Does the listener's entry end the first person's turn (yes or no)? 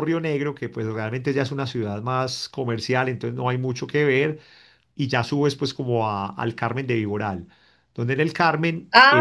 yes